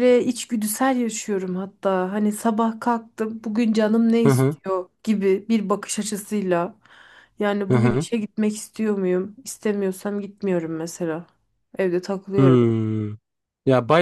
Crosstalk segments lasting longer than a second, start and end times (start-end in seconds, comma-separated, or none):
none